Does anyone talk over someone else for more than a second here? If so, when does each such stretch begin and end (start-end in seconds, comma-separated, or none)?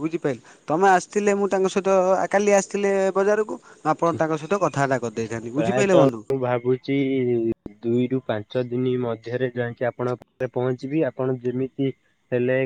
none